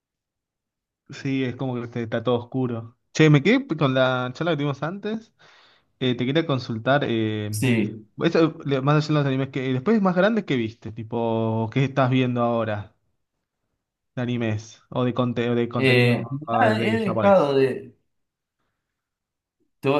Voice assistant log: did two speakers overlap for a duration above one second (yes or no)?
yes